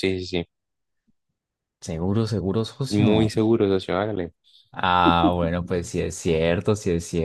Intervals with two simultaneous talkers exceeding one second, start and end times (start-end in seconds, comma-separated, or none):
none